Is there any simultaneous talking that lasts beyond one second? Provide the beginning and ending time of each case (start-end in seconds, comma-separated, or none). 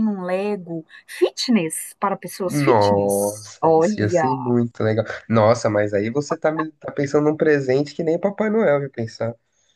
2.5-4.3